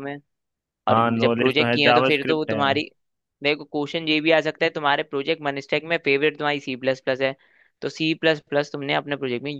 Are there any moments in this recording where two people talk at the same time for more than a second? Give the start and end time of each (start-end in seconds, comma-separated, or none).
0.9-2.6